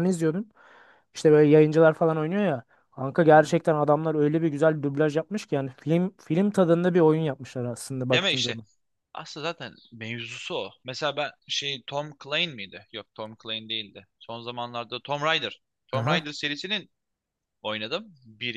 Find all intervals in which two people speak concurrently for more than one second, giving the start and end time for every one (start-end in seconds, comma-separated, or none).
none